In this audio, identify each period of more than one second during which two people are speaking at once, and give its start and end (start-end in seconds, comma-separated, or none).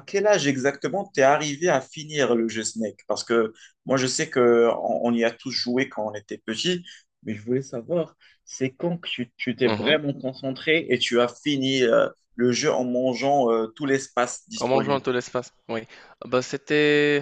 none